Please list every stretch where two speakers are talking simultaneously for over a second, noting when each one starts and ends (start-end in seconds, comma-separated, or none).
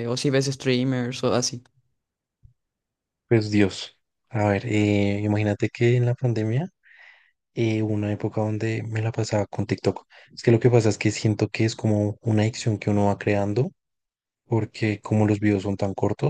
none